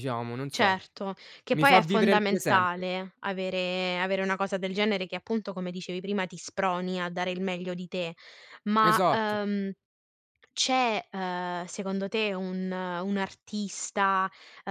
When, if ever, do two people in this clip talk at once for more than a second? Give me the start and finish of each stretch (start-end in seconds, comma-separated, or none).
1.5-2.9